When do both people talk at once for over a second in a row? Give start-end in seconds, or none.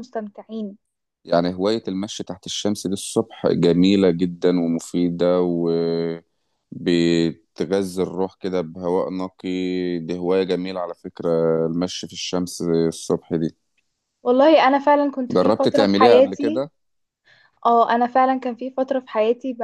15.3-16.6